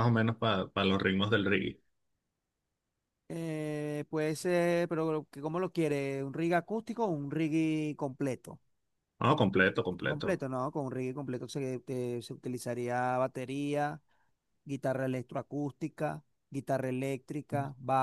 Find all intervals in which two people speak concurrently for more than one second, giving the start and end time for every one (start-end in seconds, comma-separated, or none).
none